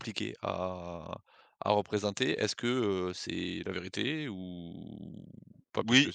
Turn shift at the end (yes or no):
yes